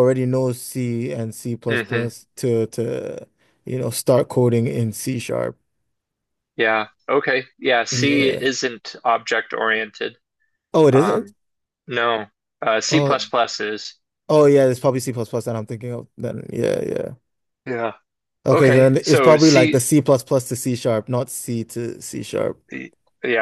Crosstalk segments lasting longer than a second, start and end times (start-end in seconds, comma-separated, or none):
18.5-19.8